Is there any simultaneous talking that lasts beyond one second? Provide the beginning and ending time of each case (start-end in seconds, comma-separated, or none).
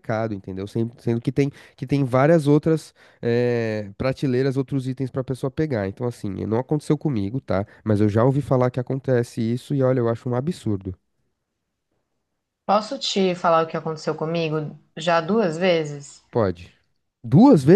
none